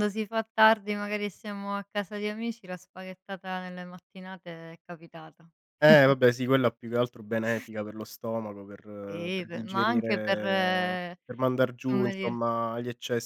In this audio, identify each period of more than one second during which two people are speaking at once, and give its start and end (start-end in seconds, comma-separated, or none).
9.1-11.2